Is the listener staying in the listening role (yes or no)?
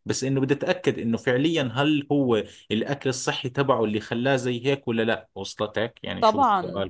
no